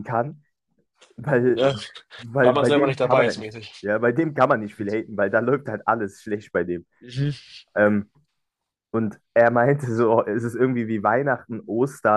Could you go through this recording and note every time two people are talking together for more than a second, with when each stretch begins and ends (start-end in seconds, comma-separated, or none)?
2.4-3.9